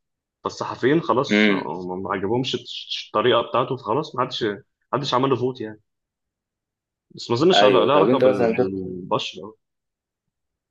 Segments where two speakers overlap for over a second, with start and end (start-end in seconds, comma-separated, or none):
7.5-8.9